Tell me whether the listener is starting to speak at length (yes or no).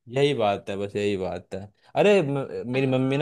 no